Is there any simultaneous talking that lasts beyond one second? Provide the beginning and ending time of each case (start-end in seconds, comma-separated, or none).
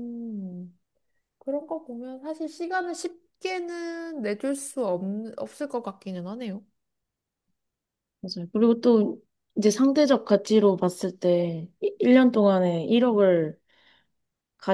none